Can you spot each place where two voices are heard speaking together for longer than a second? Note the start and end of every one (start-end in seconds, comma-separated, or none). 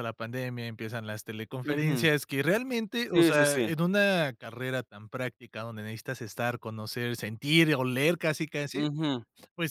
none